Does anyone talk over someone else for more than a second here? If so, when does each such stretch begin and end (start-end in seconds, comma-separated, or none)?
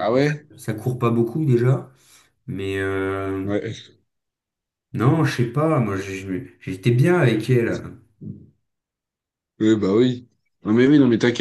none